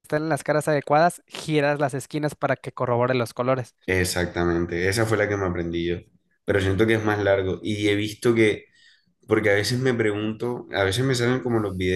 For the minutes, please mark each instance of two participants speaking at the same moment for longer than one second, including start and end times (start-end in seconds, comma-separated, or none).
none